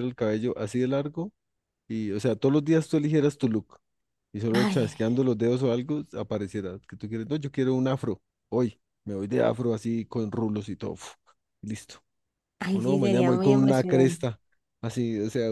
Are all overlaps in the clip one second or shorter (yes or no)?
no